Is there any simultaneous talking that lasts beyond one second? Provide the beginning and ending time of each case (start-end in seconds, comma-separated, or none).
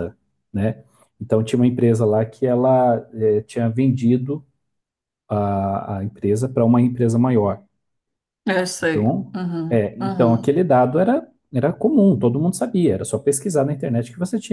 8.8-10.5